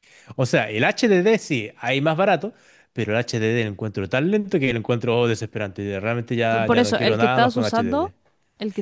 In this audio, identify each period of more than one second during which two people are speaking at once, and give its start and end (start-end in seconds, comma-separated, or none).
6.5-8.1